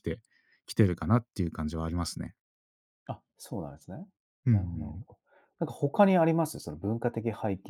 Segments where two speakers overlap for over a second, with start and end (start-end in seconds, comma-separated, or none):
none